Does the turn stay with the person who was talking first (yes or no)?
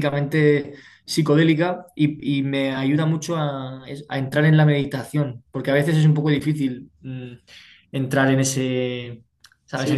no